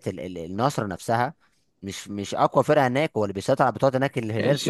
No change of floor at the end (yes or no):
no